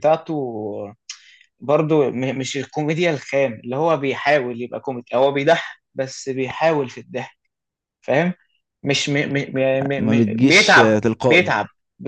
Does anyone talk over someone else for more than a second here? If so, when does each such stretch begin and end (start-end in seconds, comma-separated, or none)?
10.0-11.6